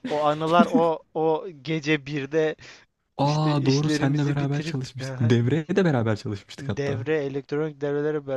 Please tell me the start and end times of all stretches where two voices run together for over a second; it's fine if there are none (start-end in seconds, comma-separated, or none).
3.2-5.3